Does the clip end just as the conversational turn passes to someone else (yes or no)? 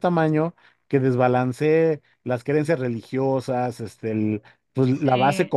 no